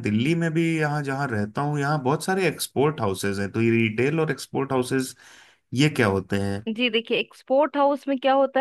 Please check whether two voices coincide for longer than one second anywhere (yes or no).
no